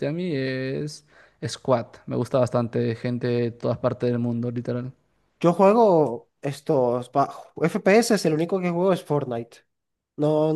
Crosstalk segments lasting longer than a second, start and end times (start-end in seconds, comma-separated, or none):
none